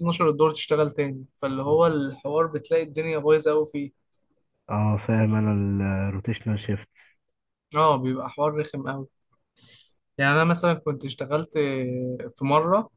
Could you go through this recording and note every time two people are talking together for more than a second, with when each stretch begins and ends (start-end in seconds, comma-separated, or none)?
none